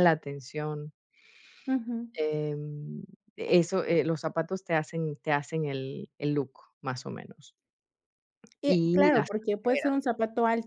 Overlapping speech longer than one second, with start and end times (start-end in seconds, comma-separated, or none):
8.6-9.9